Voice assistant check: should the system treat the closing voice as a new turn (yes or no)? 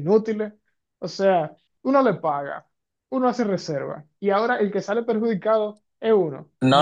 yes